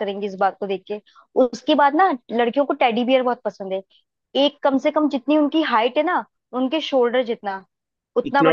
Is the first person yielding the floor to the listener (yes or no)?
no